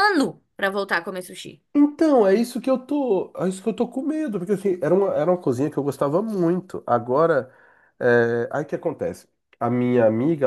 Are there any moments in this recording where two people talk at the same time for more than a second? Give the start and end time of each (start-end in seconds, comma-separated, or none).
none